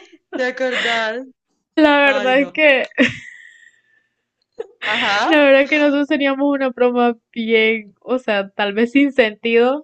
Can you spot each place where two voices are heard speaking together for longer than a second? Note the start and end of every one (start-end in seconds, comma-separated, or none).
none